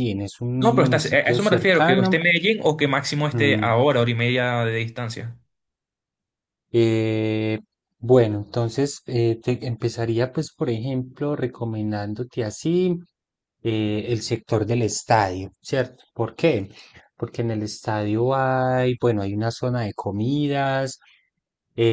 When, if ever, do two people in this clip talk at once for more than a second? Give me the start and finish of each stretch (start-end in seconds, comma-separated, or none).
0.6-2.2